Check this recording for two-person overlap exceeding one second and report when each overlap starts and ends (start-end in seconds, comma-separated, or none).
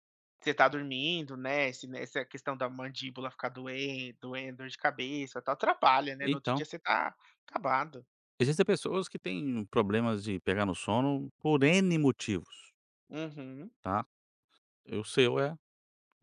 none